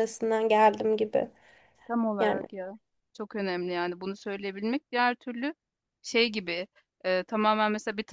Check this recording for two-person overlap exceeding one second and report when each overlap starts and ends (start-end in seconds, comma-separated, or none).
none